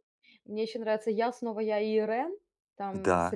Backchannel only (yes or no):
yes